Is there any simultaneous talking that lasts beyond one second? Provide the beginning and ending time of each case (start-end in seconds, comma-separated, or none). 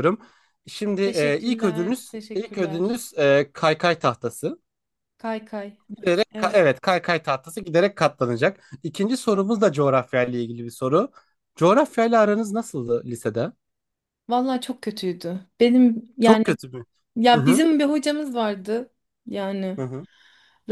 1.0-3.0